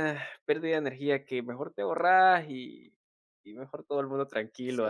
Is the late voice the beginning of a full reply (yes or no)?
yes